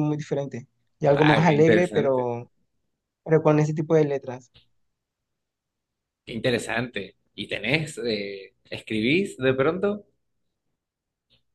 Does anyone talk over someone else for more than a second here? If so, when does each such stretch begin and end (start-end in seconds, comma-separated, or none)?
1.1-2.3